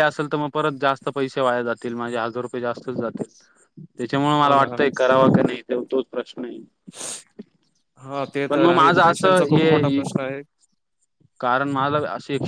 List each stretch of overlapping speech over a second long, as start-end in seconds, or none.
8.5-10.0